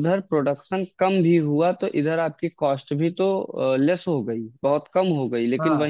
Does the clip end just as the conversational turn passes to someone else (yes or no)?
no